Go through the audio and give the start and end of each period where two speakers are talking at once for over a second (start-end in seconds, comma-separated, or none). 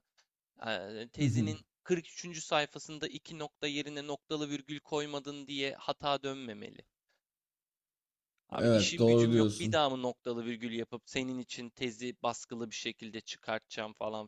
8.6-9.8